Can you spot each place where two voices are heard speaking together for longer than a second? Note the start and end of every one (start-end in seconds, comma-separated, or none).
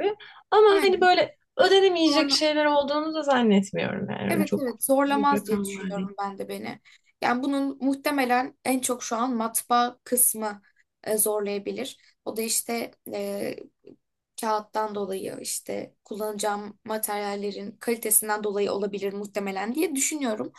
4.3-6.1